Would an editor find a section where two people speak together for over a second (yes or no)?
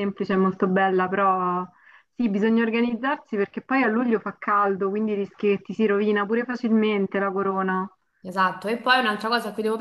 no